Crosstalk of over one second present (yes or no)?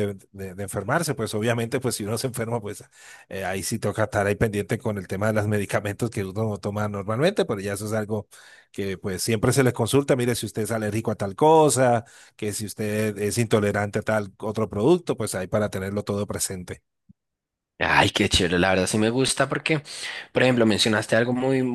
no